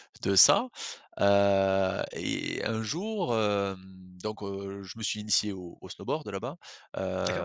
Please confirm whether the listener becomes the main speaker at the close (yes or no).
yes